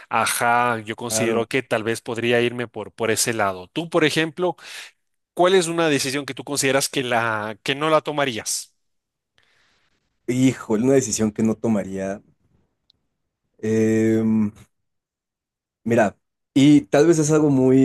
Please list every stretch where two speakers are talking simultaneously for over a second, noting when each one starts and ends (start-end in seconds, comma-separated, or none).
none